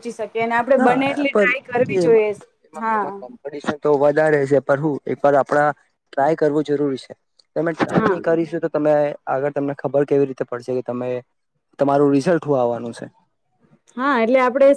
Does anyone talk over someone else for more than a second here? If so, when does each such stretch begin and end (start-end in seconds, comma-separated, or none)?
0.8-2.3